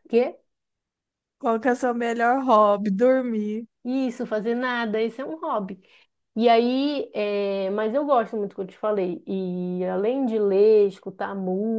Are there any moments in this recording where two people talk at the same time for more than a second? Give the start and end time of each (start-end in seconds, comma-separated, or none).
none